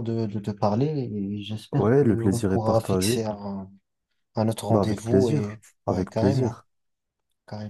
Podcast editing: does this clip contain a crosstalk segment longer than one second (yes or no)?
yes